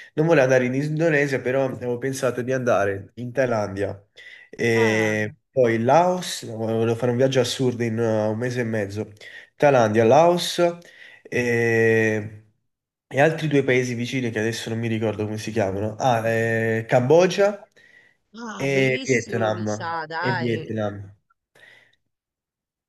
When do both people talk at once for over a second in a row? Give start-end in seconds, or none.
18.6-20.7